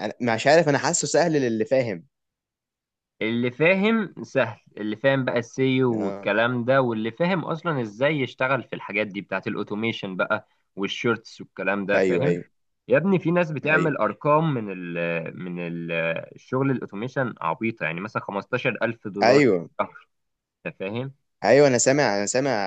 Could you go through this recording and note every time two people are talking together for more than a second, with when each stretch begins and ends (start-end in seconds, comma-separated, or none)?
none